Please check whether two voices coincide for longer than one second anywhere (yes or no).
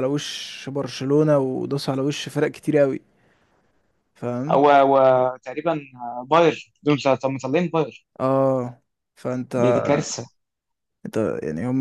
no